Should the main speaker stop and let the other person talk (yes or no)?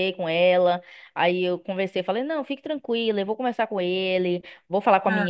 no